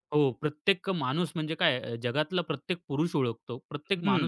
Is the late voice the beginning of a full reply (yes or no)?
yes